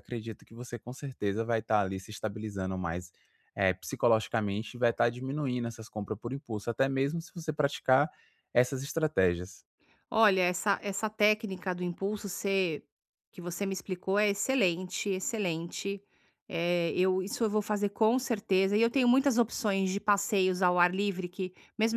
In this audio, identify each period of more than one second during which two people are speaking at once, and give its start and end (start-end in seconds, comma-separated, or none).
none